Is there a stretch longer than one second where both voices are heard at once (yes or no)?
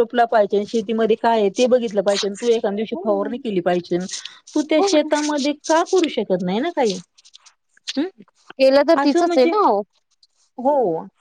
no